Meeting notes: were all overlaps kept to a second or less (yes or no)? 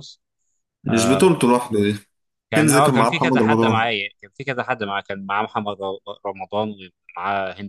no